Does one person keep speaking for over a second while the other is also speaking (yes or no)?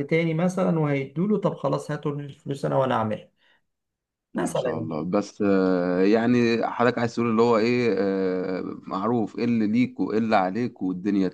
no